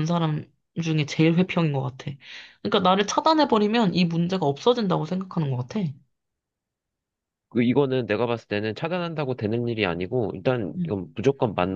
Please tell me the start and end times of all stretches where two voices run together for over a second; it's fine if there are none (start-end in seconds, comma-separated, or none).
none